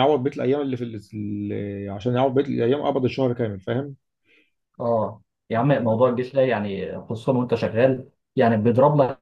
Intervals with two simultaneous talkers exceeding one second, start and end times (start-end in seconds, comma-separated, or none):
none